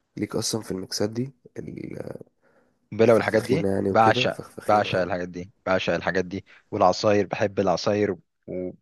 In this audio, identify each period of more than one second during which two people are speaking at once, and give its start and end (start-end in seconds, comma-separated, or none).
3.0-5.1